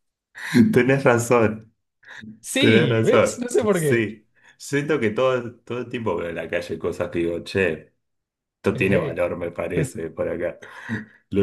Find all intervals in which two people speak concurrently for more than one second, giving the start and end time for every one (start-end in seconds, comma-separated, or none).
2.6-4.0